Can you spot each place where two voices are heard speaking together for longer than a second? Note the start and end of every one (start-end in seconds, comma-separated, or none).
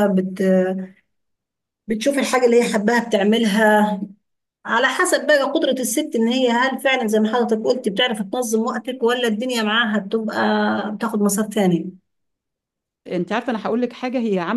none